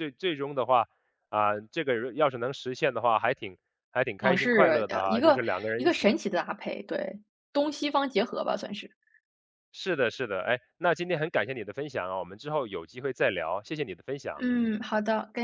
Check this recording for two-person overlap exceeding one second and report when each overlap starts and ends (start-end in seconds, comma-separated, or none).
4.2-6.2